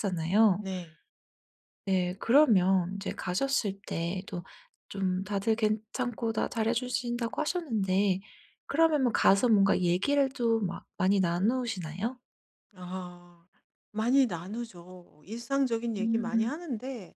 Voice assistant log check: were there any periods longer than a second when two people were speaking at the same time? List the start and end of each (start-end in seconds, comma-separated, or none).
none